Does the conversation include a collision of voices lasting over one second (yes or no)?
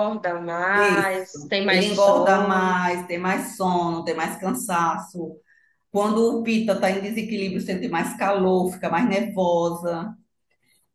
yes